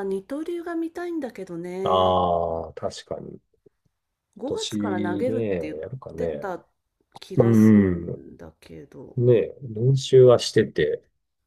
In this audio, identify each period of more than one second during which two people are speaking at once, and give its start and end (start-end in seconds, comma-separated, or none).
4.5-6.5